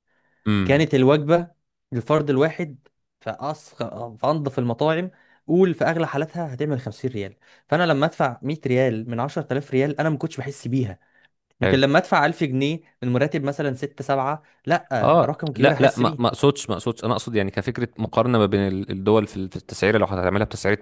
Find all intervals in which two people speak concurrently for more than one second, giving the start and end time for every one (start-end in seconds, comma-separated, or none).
15.0-16.4